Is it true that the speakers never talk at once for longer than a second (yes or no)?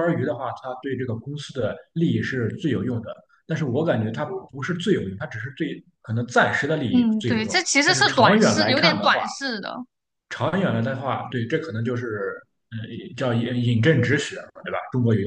no